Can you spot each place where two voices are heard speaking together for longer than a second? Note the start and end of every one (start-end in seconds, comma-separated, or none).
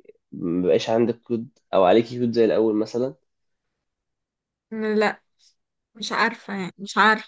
none